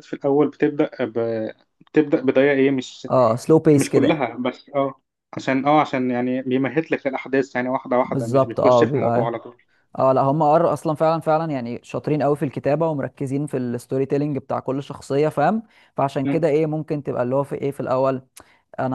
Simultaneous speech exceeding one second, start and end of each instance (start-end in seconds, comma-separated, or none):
8.0-9.3